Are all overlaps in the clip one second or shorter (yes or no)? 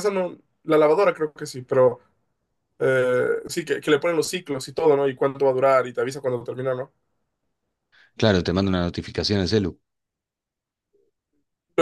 yes